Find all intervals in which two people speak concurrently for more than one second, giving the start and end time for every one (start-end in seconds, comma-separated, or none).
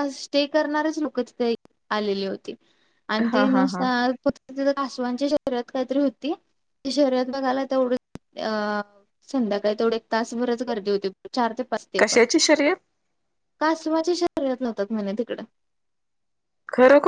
none